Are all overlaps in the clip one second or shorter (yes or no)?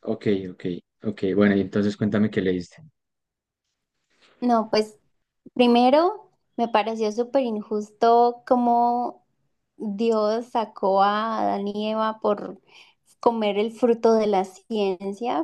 yes